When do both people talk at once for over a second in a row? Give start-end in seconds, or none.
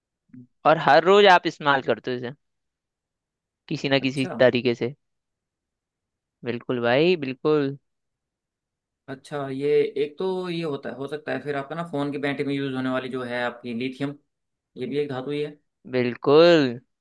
none